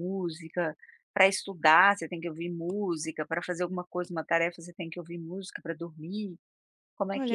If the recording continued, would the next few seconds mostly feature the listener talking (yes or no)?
yes